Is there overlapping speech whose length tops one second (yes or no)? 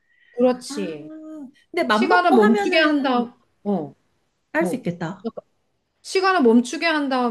yes